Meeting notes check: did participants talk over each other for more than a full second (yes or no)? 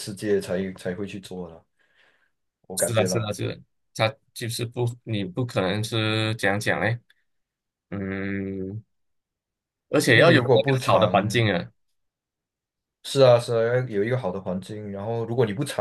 yes